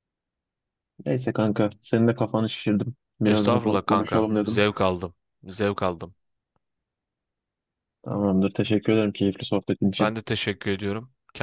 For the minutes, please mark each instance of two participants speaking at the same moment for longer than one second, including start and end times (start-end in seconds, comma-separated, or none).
3.2-4.6